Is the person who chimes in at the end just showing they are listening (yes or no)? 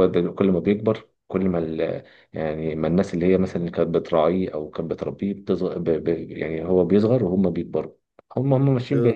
yes